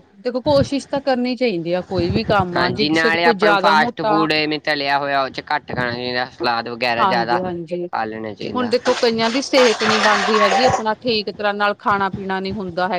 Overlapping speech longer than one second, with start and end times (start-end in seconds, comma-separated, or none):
2.5-4.1